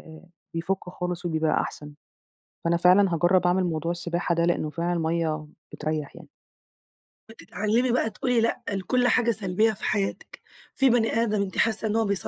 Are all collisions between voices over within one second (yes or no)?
yes